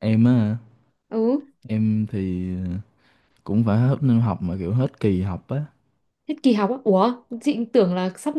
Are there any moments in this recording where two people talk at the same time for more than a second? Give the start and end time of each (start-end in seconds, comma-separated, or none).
none